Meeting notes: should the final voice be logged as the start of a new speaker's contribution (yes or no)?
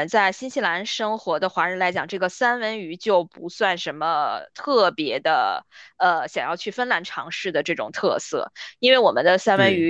no